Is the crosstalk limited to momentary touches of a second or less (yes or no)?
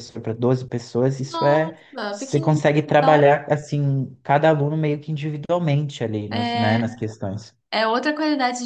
no